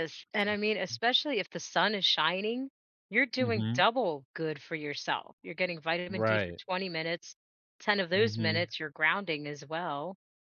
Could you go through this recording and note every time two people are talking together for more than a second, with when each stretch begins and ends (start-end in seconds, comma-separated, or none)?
none